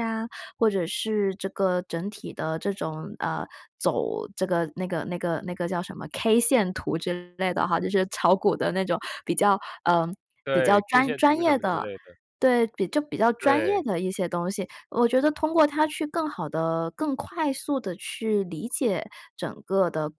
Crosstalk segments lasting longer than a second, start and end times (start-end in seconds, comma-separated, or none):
10.5-11.8